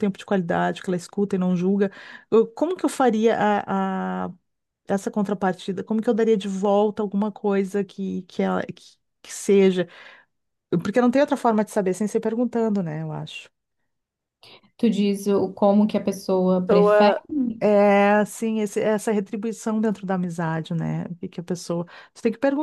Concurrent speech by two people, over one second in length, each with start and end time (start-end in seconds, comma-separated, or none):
none